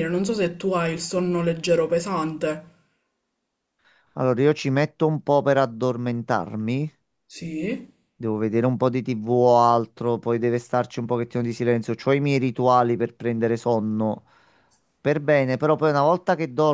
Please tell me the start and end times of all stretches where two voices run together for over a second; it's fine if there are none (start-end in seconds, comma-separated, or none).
none